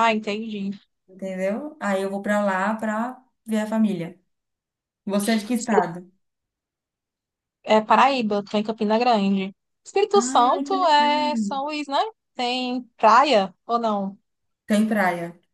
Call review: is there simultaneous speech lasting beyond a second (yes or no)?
yes